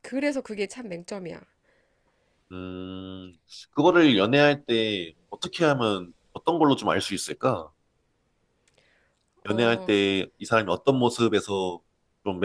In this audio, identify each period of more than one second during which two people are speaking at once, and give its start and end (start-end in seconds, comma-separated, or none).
none